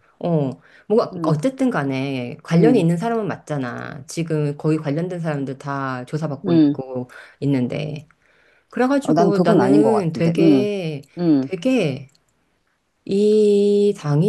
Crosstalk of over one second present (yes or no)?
yes